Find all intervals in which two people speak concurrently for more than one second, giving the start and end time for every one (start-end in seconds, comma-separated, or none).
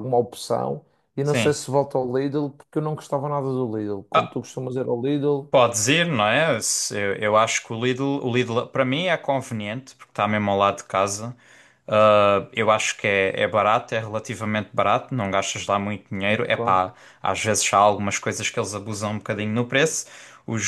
none